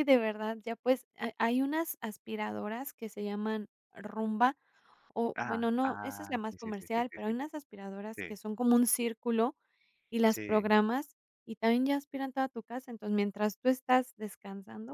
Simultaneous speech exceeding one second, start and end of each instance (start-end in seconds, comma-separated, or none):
5.3-7.3